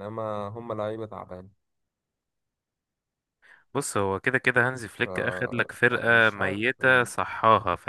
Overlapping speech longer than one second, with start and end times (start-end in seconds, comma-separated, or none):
5.9-7.1